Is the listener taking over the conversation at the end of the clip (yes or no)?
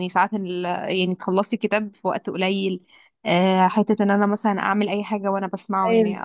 no